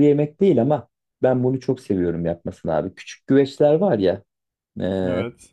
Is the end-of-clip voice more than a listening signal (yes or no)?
no